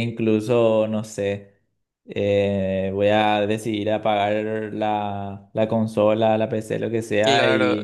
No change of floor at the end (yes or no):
no